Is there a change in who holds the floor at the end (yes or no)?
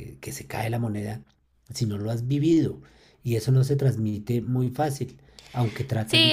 yes